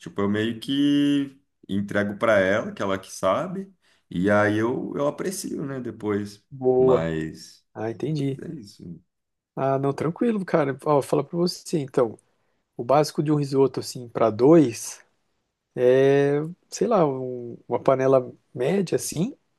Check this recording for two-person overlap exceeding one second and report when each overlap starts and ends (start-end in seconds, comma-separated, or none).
none